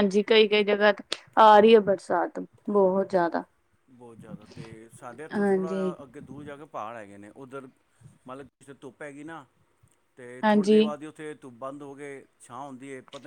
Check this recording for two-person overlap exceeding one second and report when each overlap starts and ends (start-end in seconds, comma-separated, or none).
none